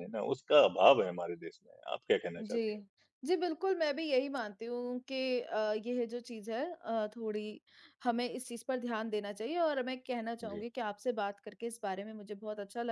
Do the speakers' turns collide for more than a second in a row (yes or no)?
no